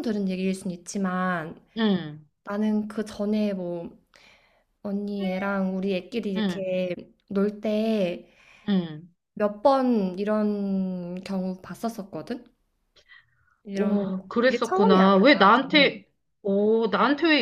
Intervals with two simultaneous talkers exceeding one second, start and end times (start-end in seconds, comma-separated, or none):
13.7-16.0